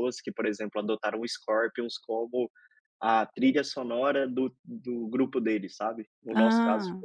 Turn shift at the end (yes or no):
no